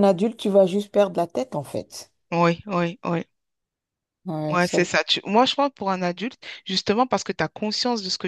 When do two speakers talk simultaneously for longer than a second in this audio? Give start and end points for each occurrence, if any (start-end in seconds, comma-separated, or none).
none